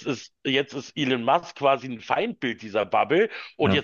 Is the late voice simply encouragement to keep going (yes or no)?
yes